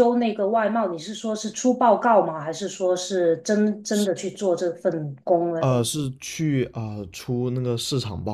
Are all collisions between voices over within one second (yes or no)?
yes